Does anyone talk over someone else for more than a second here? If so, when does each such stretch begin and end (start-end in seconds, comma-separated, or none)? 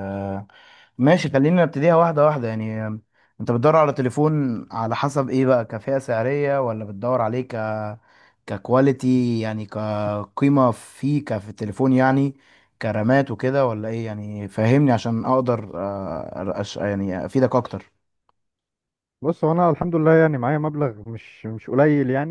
none